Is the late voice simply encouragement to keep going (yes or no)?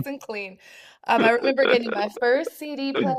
yes